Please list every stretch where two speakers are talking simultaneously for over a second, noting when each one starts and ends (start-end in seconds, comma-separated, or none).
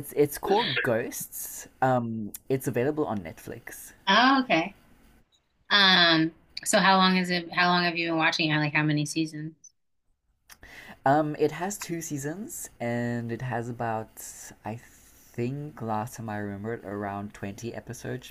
none